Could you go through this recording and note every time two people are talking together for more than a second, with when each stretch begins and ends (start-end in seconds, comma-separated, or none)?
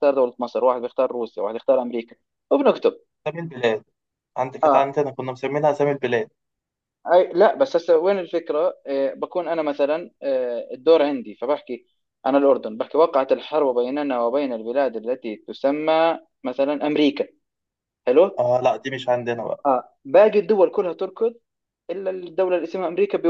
none